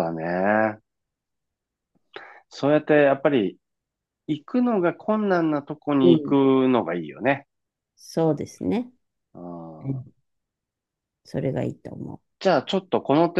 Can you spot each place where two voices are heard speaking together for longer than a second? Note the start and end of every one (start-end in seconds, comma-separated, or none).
none